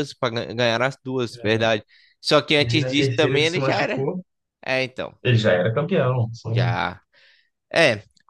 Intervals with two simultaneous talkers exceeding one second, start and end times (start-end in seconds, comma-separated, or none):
2.6-4.1